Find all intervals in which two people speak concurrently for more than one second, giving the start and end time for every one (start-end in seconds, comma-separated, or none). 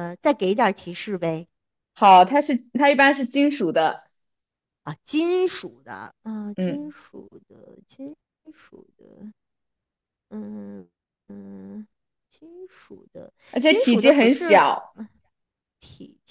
13.5-14.9